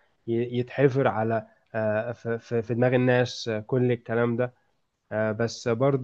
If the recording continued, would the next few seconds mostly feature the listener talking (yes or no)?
no